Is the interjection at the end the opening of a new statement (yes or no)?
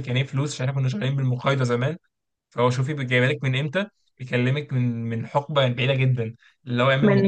yes